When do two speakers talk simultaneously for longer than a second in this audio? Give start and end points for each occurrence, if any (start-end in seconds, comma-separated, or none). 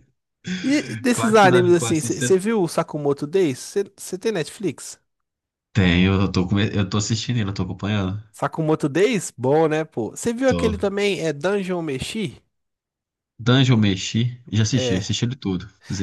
1.1-2.3